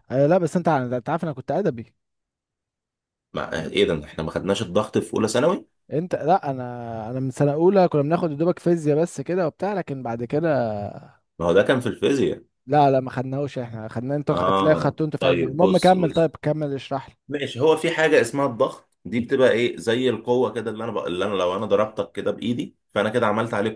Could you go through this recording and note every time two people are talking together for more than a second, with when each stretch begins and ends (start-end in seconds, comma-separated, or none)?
14.3-16.3